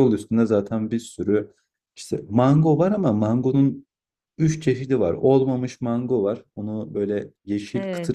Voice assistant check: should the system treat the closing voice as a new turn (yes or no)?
no